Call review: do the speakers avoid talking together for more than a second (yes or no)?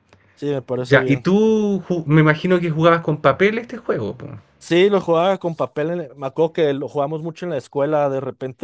yes